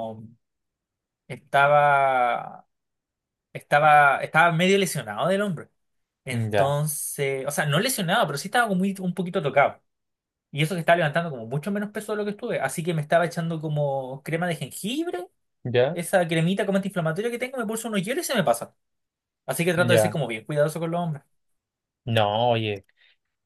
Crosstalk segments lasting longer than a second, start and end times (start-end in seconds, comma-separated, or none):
none